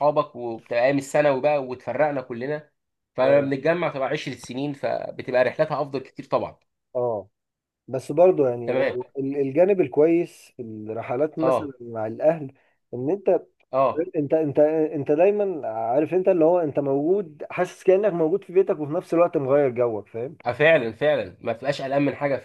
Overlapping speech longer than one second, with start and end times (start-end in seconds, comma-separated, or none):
none